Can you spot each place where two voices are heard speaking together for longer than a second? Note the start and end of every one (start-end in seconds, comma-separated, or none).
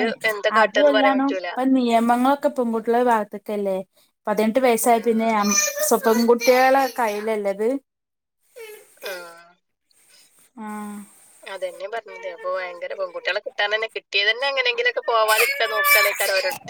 none